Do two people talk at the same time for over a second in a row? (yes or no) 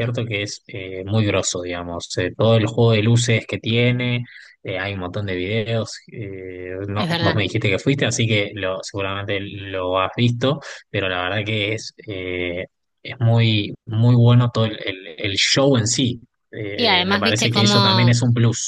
yes